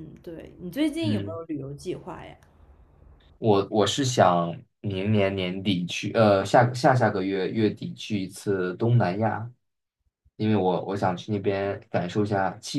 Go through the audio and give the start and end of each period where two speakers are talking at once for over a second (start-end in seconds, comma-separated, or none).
none